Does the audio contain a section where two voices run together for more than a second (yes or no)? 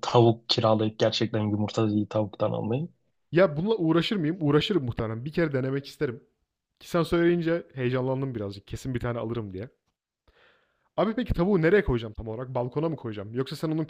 no